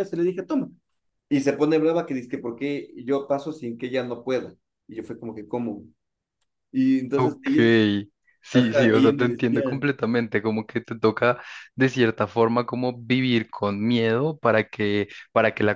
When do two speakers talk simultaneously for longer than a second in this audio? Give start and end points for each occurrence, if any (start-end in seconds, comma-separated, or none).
8.5-9.8